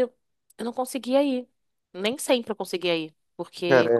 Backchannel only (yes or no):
yes